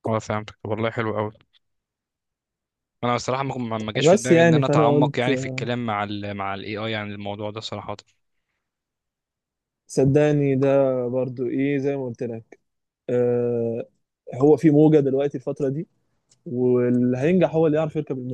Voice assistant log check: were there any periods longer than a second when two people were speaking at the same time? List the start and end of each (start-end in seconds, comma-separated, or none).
4.0-5.6